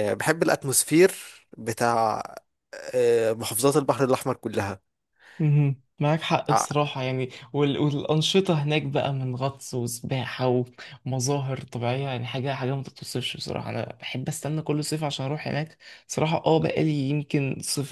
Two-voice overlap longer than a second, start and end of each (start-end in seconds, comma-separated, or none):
none